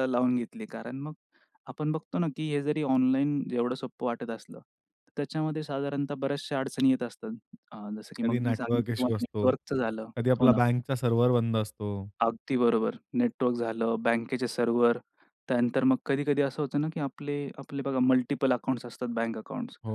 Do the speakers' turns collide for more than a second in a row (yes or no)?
yes